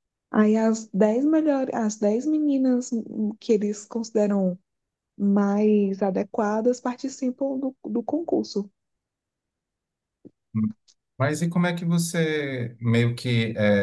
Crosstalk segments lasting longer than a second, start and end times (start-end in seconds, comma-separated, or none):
none